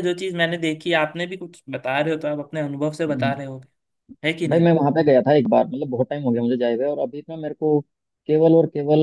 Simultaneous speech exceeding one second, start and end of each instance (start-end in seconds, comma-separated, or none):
none